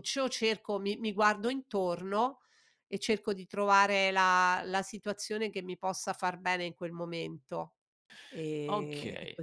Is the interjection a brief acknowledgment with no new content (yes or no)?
no